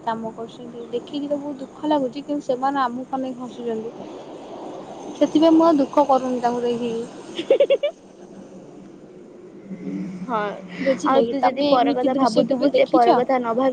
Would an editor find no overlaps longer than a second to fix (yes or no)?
no